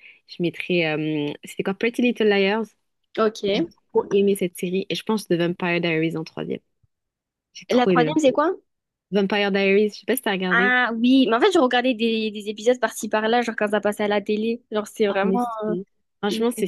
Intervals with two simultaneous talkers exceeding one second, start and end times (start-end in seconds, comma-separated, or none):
none